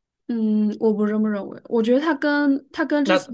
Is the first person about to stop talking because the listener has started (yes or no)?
no